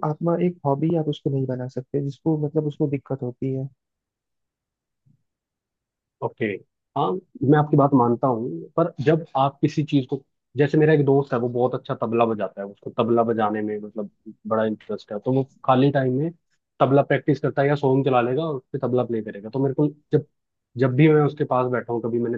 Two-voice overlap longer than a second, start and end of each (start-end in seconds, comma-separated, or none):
none